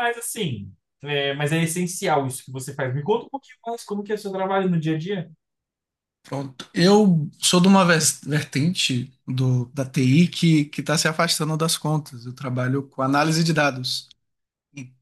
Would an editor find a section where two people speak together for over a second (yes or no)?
no